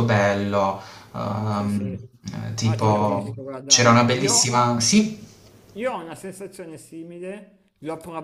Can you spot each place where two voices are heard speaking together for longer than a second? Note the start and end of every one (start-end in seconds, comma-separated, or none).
2.6-4.5